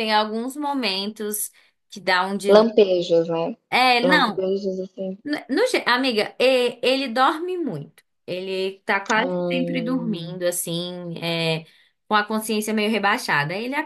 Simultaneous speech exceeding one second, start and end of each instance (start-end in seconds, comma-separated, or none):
9.2-10.4